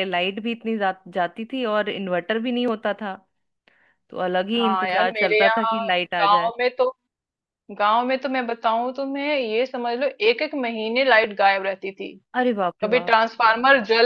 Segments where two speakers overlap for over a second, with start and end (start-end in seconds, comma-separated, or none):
4.5-6.5